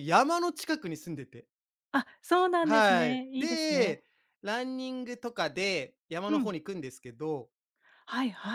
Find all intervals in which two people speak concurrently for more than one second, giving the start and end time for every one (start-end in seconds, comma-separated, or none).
2.6-4.0